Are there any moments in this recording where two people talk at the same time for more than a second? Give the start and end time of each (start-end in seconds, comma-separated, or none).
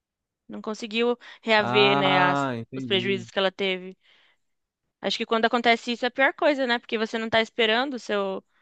1.6-3.3